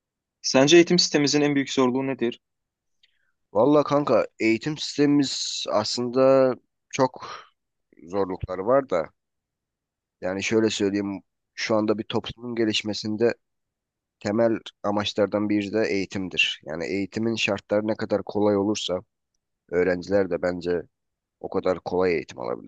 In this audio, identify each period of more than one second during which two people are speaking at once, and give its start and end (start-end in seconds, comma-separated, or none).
none